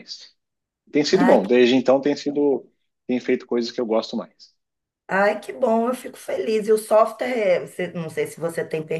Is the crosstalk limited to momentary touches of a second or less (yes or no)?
yes